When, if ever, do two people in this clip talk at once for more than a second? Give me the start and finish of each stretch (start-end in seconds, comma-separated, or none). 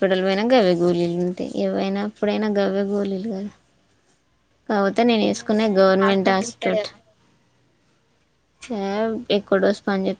5.4-6.9